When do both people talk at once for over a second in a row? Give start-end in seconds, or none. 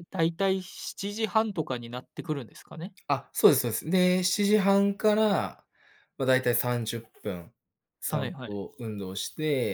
none